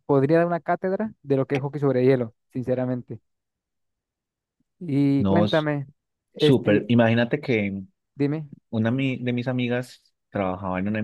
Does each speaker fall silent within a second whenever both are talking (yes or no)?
yes